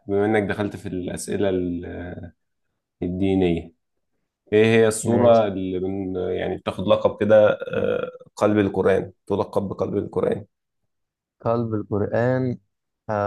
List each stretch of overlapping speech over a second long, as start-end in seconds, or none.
none